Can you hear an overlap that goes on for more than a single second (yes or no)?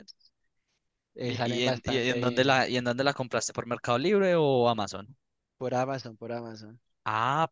yes